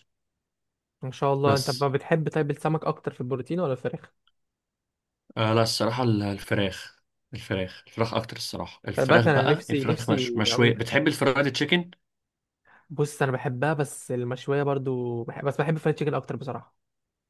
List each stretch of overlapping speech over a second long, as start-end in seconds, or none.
9.0-11.0